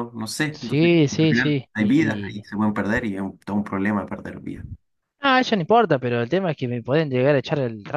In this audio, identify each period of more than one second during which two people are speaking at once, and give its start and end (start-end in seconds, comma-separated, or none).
0.5-2.4